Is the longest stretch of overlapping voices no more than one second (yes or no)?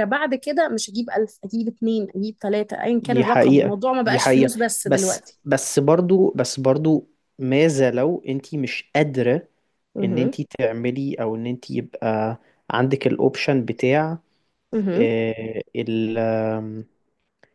no